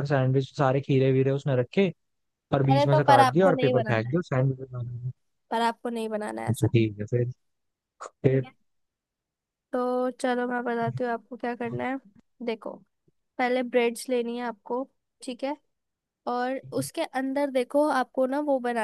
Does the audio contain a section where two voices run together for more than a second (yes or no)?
yes